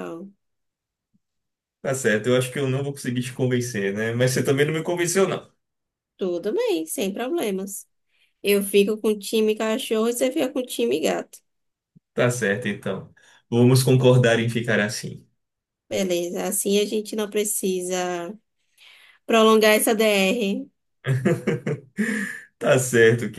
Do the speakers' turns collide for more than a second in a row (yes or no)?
no